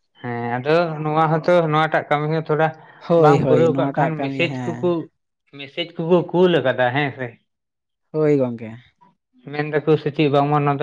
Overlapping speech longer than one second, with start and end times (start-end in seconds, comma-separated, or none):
3.2-4.9